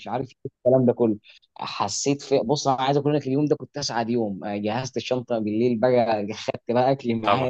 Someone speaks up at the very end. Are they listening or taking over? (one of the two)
listening